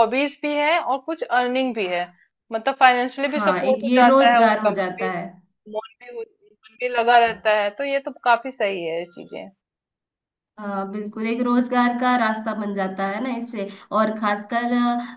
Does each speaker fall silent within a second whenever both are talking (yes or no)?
no